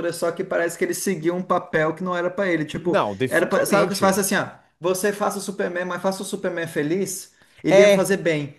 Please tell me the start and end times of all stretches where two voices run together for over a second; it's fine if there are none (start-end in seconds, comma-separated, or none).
2.8-4.2